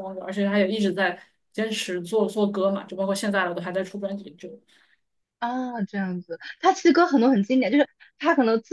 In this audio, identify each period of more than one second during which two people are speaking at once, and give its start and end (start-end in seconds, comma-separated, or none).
none